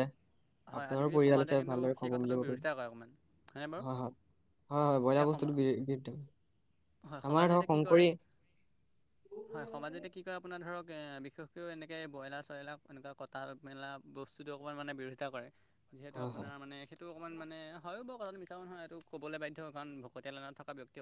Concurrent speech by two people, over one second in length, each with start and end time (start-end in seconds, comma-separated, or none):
0.8-2.7